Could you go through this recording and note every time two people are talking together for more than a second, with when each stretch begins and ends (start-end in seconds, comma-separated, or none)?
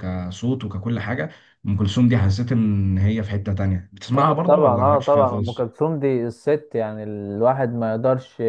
4.1-5.7